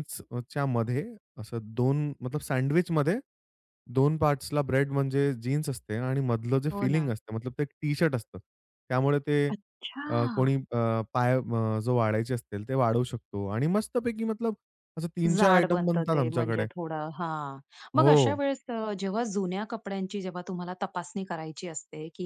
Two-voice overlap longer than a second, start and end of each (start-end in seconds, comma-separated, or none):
15.3-16.7